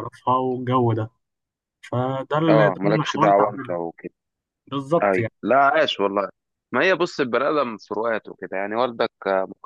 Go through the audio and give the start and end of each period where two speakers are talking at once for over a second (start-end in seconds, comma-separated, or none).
2.5-3.7